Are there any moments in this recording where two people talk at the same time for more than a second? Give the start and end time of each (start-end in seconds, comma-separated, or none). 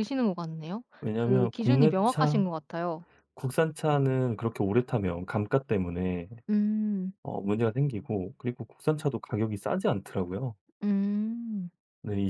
1.0-2.5